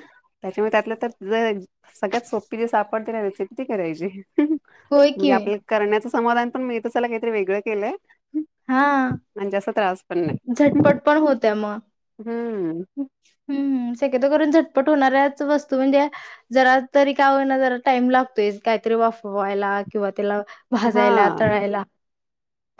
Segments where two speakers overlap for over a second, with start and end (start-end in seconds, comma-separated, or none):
none